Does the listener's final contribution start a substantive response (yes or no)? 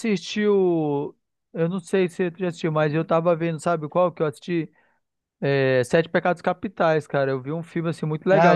yes